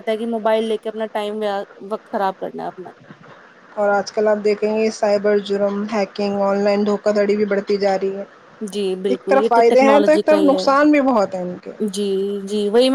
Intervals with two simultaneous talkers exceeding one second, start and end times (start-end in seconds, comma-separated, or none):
9.1-10.6